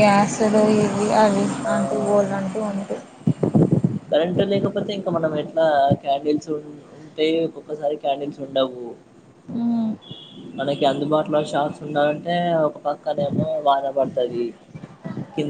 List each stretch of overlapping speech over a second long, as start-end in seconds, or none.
none